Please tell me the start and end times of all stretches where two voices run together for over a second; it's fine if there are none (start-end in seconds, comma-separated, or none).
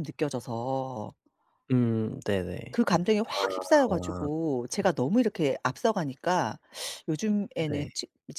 none